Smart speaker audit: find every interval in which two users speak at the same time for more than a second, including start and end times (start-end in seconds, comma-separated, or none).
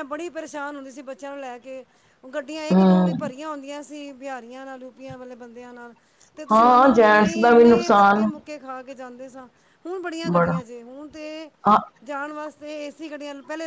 6.5-8.3